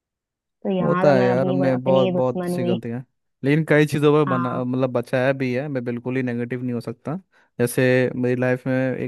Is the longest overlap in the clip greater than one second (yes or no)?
yes